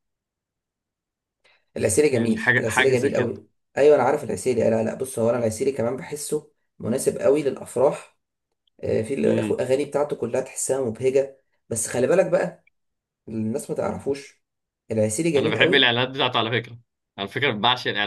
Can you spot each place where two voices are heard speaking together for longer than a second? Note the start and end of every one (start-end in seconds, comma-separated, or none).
2.1-3.3